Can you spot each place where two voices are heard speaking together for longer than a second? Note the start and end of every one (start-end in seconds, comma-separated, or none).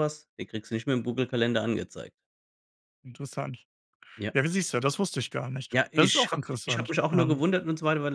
5.7-7.4